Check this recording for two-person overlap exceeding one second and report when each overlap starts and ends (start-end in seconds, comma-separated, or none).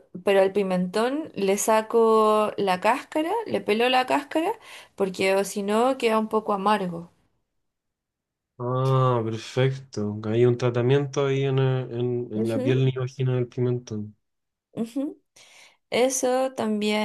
none